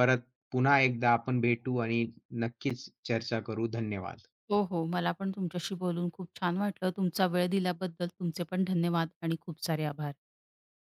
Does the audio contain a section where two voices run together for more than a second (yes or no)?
no